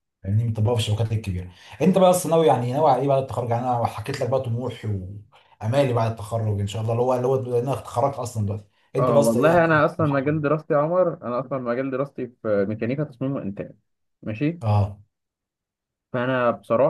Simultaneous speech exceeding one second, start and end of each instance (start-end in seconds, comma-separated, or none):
9.0-10.3